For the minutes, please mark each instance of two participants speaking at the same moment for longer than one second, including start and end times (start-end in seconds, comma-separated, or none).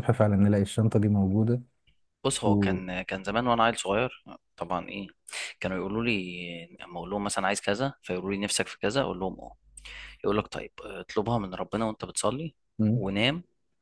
none